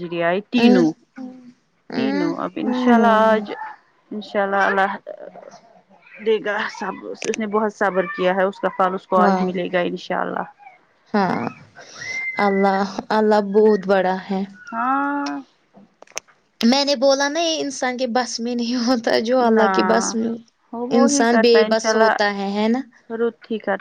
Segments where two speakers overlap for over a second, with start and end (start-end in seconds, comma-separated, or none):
1.9-3.5